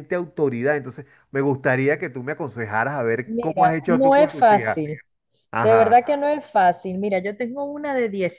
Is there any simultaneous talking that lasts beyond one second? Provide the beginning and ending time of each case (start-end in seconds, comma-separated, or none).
3.2-4.8